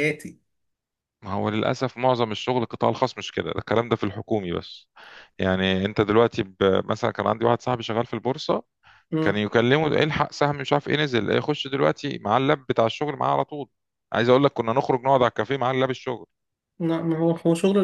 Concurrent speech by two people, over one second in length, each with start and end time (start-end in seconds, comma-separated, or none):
none